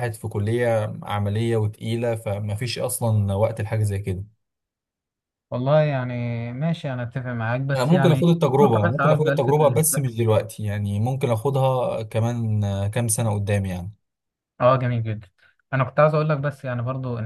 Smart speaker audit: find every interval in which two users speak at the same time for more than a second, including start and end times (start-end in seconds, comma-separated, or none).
7.7-10.1